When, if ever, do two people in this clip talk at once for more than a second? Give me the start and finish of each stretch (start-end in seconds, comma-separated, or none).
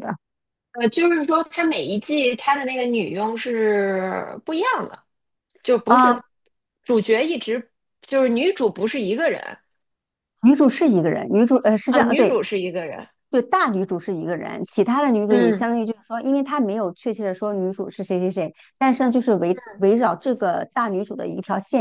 none